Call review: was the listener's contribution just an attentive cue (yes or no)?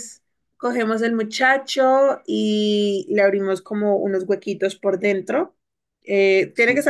yes